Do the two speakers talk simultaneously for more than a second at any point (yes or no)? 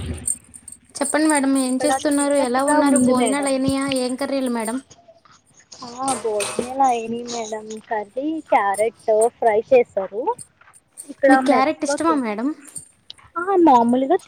yes